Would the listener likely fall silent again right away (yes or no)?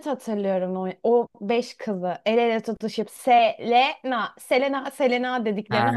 no